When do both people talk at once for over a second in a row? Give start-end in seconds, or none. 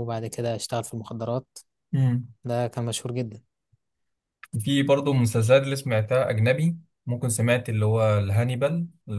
none